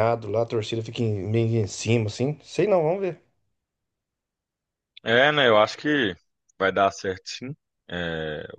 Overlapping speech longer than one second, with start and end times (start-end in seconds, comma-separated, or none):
none